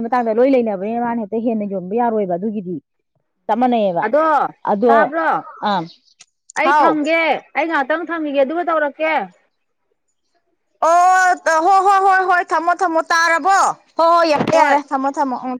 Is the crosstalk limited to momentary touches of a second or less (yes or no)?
yes